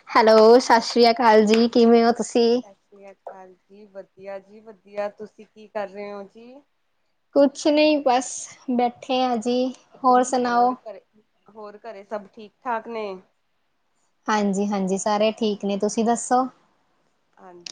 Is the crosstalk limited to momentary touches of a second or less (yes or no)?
yes